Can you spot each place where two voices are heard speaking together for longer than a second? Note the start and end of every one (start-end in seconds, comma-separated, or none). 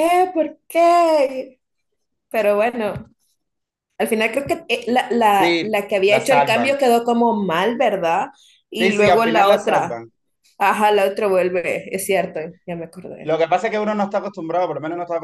5.3-6.8, 8.8-10.0